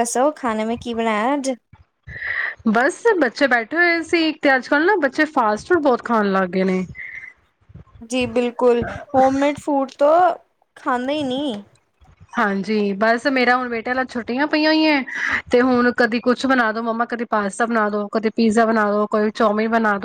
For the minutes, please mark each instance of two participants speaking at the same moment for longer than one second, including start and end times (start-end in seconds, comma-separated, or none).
none